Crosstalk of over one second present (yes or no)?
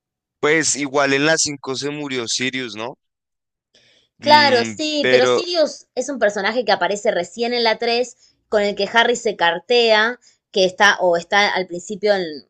yes